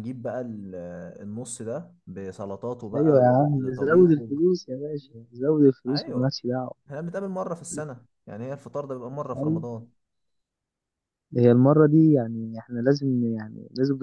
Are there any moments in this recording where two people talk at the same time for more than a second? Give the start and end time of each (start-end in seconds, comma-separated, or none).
3.0-4.3